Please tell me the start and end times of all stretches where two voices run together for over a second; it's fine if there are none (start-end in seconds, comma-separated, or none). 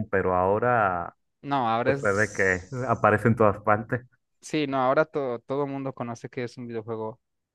1.8-3.1